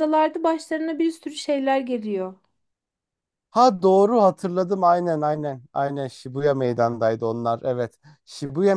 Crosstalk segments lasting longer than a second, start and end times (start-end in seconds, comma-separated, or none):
none